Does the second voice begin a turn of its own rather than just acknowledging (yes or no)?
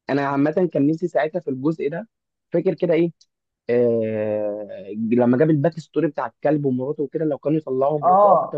yes